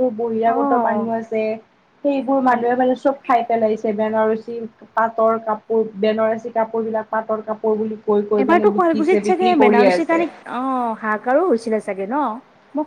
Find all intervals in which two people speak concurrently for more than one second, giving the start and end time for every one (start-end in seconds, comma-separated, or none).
8.4-10.2